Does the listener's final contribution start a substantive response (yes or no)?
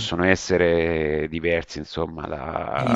yes